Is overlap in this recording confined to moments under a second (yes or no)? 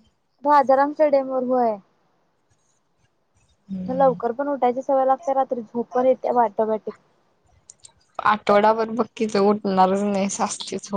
yes